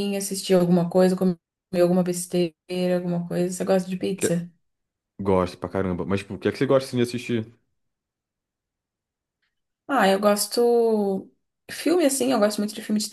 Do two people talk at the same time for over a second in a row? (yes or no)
no